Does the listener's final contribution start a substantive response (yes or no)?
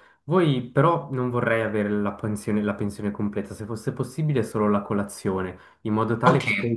yes